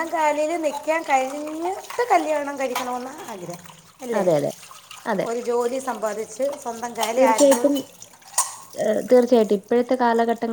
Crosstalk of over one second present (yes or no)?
no